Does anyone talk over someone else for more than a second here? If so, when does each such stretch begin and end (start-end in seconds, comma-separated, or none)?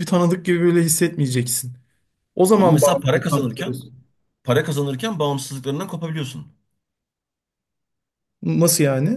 2.5-3.8